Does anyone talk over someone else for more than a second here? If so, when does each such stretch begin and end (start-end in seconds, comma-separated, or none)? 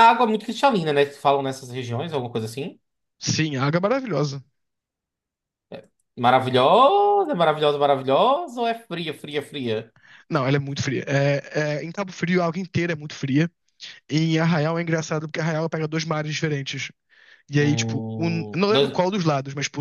17.6-19.1